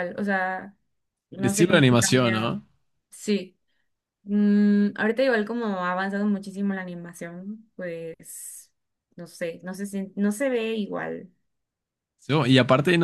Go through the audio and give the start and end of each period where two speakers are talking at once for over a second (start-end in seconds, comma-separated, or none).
1.4-2.6